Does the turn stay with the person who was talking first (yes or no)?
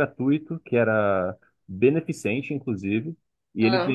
yes